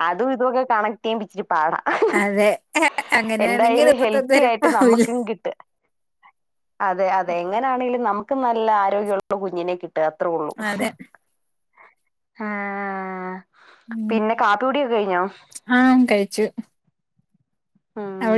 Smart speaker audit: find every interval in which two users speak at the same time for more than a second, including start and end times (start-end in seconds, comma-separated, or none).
3.5-5.0